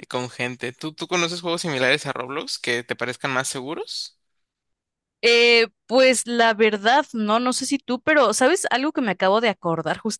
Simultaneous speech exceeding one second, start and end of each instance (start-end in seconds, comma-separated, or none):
none